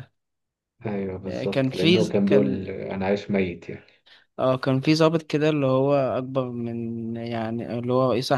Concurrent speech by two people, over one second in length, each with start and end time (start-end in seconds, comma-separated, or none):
1.3-2.7